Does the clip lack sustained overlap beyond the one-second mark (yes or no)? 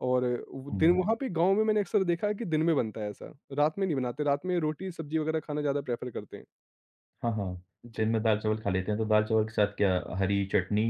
yes